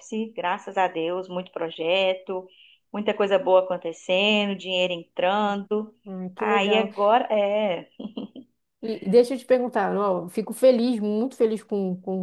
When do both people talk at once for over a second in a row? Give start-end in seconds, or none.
none